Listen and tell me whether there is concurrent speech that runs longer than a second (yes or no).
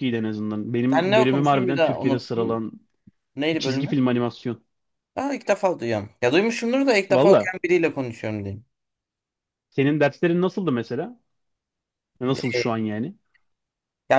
yes